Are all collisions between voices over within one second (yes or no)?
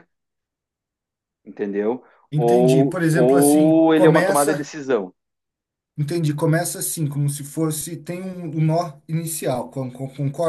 no